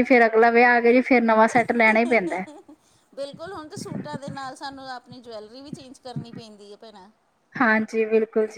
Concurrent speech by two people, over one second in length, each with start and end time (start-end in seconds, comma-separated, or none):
none